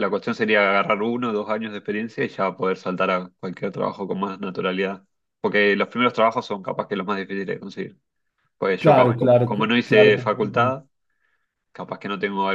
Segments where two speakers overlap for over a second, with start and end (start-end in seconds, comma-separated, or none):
8.8-10.8